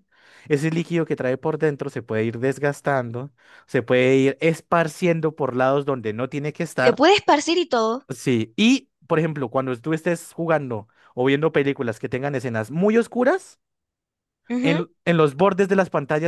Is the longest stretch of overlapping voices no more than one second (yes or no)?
yes